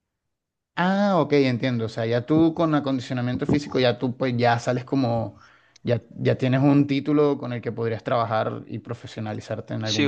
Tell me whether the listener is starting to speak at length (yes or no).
yes